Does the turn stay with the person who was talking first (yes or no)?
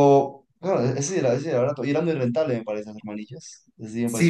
no